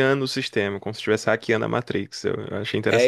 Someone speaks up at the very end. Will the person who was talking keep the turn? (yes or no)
no